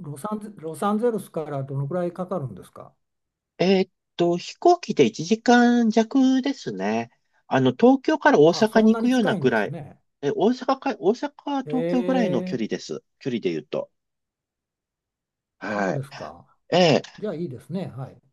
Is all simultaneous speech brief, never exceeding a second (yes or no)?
no